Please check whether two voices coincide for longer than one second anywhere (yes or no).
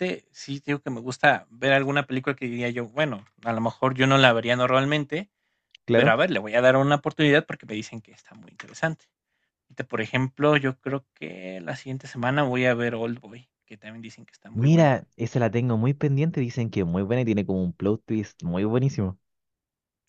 no